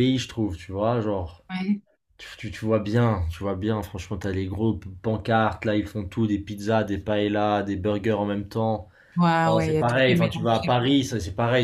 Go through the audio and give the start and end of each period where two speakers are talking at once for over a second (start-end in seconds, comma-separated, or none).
9.4-11.0